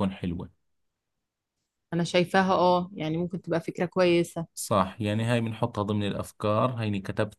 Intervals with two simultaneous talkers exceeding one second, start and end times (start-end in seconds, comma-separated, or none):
none